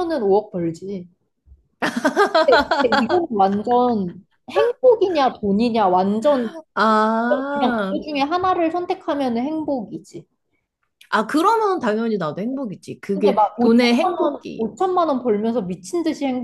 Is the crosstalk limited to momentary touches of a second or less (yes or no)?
no